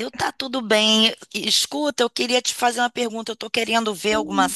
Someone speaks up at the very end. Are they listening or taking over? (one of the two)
listening